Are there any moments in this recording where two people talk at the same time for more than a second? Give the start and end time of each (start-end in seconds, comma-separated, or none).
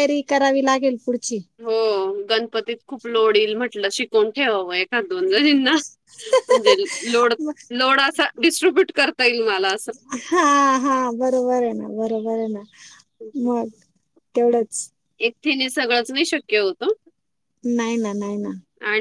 none